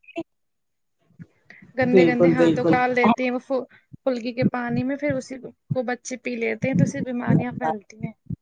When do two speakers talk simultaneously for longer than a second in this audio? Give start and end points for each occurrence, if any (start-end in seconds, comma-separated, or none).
2.0-3.3